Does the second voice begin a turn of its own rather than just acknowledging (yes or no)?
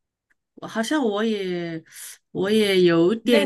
yes